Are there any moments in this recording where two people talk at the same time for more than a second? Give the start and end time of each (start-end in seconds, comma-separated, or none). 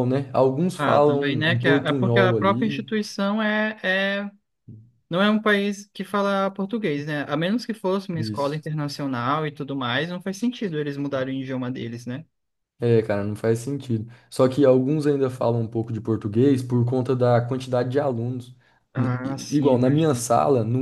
0.8-2.9, 18.9-20.2